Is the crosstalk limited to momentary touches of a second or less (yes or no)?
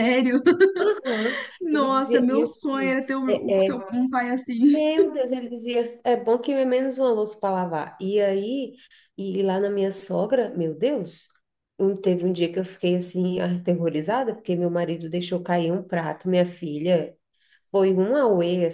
no